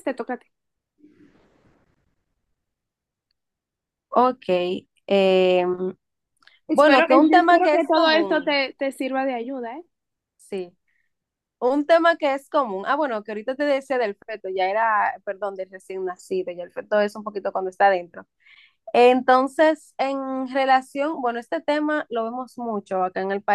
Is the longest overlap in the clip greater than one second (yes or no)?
yes